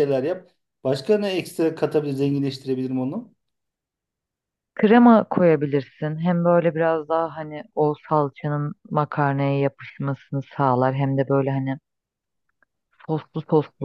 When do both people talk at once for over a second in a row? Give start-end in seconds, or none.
none